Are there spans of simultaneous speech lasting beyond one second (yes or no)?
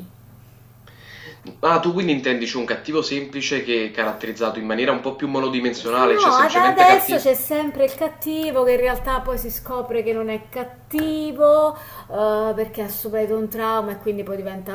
yes